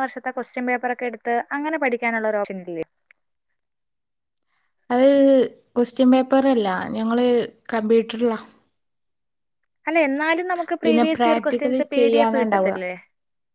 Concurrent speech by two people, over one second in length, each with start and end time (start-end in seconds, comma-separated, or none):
10.8-12.7